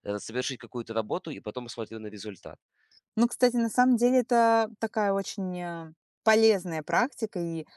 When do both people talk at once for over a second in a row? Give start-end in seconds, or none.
none